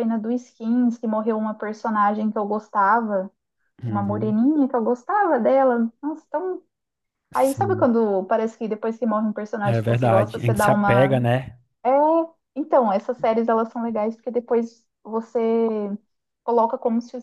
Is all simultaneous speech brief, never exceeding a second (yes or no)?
no